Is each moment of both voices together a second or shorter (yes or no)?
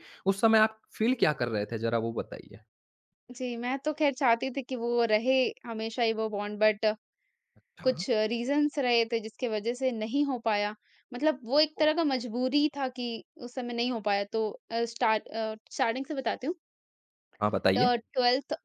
yes